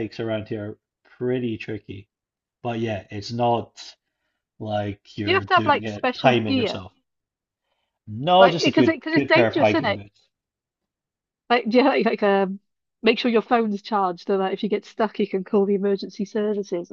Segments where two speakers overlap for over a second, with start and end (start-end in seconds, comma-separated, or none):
5.2-6.8, 8.4-10.0